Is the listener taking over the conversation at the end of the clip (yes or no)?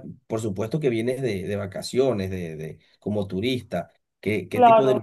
no